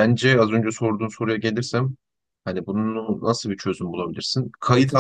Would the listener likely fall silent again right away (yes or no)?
yes